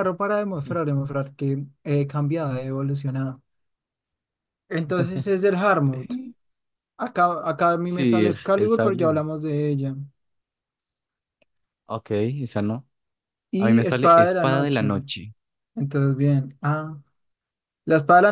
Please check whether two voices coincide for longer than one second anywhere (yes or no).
yes